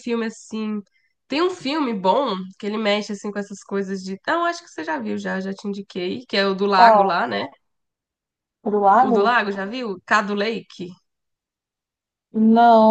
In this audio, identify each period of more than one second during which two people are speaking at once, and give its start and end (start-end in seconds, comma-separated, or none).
none